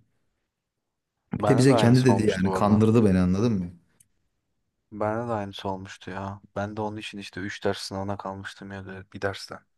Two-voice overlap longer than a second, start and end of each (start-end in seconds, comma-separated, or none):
1.4-2.8